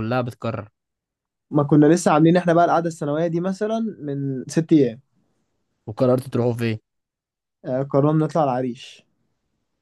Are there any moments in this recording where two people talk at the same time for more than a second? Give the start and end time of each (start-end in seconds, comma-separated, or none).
none